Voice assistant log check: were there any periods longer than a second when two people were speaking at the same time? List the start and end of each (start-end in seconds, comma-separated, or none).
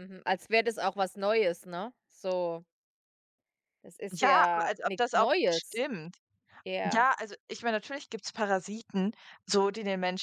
4.1-5.8